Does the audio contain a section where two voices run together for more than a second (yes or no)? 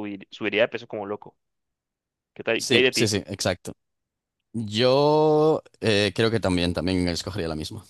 no